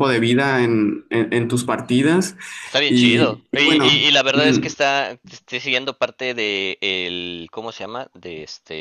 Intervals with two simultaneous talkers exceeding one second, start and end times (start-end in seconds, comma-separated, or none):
2.9-4.6